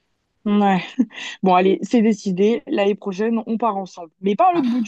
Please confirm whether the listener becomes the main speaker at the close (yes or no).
no